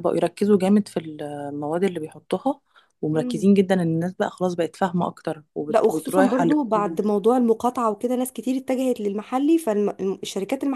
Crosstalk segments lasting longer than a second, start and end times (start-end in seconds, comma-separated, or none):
5.7-7.0